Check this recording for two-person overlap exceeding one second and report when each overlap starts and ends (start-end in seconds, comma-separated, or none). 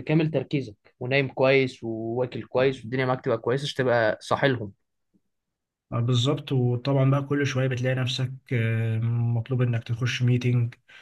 none